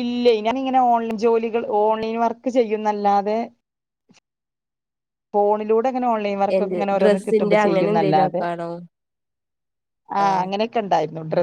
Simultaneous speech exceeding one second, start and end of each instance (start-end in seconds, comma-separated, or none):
6.6-8.4